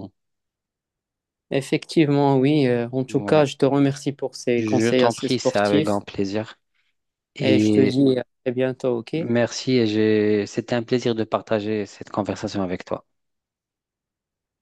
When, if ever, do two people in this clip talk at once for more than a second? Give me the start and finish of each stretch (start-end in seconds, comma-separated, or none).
4.5-6.0